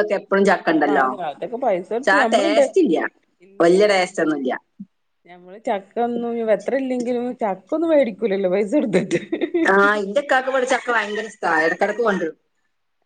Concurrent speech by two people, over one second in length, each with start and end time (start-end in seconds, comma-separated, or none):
none